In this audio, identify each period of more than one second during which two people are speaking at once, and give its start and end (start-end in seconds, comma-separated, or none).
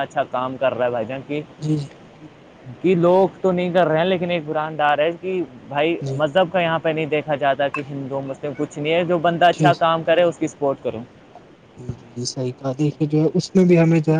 none